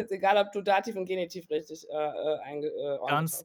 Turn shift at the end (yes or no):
yes